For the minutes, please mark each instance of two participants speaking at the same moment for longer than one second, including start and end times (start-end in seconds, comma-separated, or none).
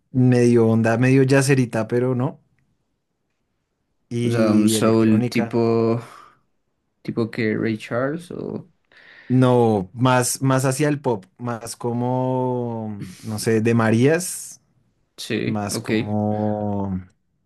4.2-5.6